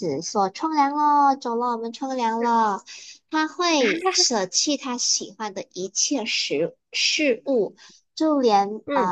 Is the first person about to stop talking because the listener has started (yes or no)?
no